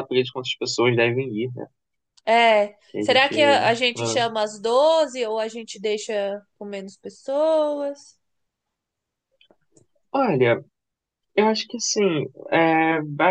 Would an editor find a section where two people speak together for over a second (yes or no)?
no